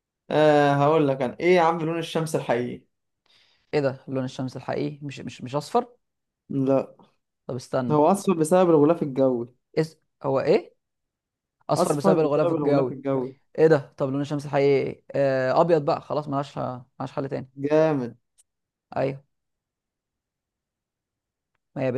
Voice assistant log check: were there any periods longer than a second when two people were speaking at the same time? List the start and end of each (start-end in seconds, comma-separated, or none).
11.8-13.0